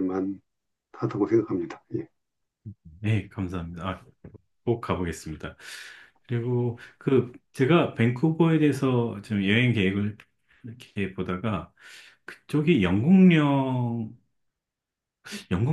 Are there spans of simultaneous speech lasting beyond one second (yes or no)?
no